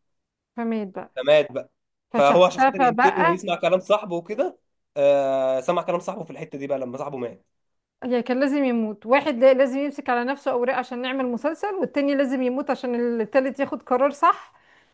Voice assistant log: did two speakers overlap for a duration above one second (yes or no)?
yes